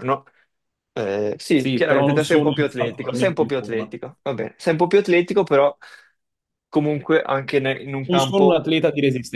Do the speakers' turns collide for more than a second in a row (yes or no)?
yes